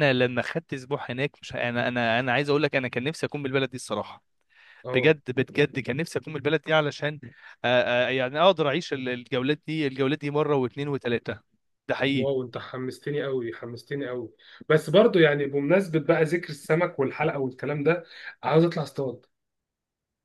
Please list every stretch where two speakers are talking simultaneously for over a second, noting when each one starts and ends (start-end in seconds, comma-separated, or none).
none